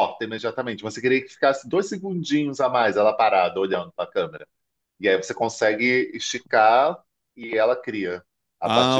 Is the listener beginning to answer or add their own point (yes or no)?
yes